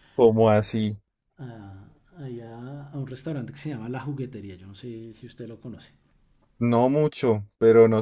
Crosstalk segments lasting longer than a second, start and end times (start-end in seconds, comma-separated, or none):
none